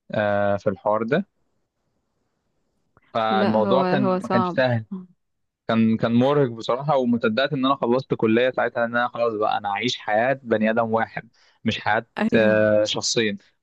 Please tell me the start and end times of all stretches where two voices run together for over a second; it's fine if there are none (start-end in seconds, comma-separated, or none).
3.3-4.6